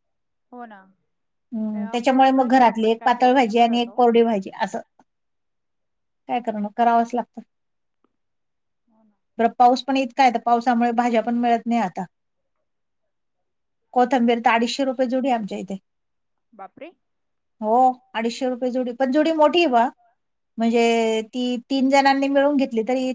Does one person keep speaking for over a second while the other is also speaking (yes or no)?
yes